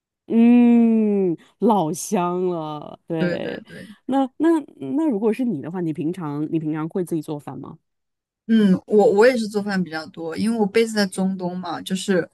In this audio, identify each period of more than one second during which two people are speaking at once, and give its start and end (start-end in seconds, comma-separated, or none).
none